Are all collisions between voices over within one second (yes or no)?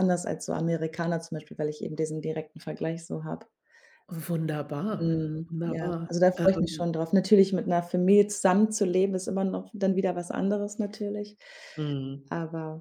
no